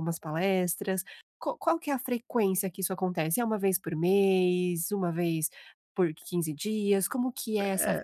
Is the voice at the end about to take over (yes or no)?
yes